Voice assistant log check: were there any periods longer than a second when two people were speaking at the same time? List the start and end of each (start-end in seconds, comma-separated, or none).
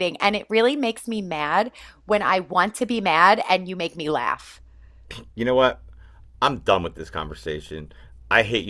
none